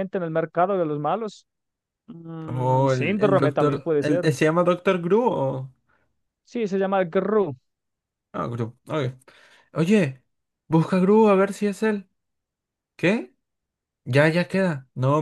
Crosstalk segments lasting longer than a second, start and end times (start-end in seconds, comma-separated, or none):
2.5-4.3